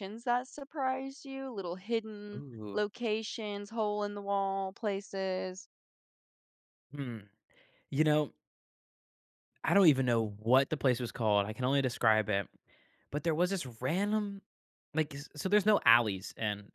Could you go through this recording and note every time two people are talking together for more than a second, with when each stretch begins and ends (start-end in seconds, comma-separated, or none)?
none